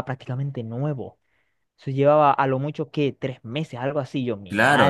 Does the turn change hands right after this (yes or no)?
yes